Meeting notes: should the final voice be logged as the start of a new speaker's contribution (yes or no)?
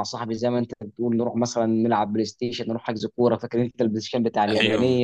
yes